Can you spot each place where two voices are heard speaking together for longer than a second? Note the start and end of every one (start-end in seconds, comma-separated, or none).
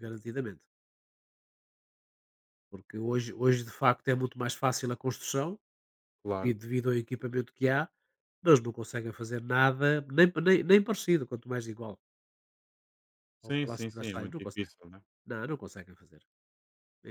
13.4-14.7